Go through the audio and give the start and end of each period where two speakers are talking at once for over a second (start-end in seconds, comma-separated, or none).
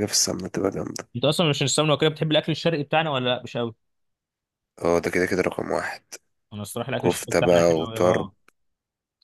7.0-8.3